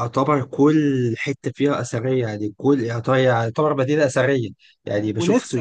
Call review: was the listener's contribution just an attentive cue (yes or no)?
yes